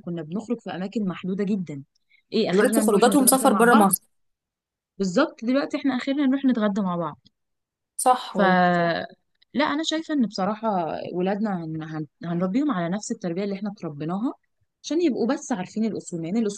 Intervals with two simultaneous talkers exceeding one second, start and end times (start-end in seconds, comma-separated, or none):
2.5-3.9